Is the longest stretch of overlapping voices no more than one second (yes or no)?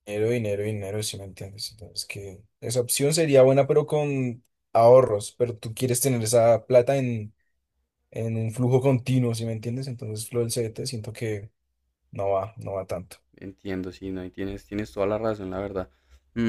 yes